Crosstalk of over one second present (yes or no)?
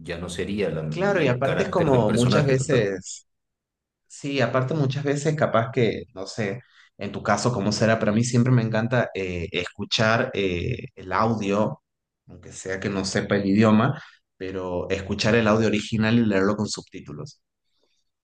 yes